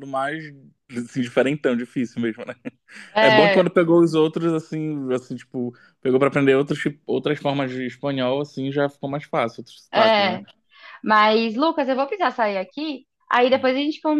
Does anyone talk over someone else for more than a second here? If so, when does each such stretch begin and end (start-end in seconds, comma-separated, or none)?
none